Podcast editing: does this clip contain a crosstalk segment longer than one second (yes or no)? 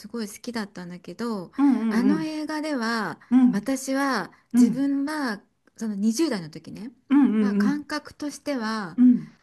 no